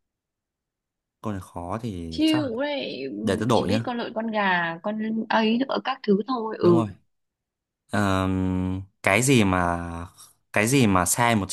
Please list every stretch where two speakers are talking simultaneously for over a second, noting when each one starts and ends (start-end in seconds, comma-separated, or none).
none